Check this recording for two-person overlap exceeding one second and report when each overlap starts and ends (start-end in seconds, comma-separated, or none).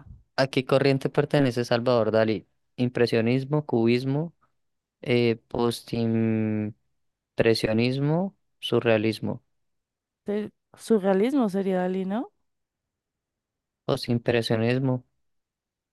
none